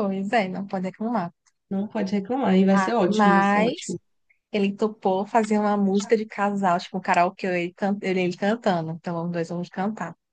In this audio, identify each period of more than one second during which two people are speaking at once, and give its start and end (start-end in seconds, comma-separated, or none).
2.7-4.0